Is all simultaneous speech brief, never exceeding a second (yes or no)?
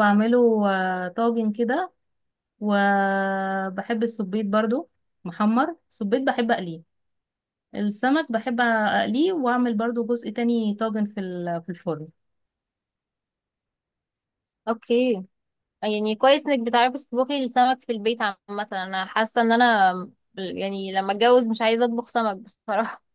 yes